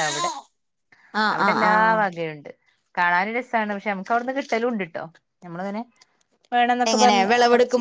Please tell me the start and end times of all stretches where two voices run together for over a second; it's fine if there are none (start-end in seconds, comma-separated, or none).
none